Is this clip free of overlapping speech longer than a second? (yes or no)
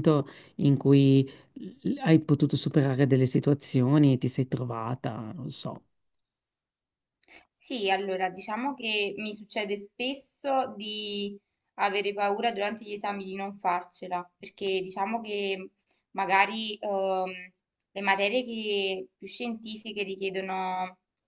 yes